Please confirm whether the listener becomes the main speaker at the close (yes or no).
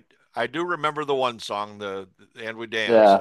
no